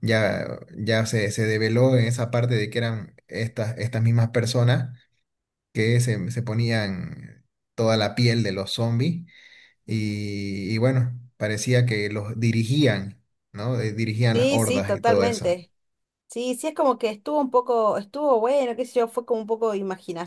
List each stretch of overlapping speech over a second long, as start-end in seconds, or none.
14.3-15.6